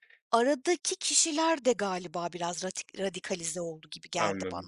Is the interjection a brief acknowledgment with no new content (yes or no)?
no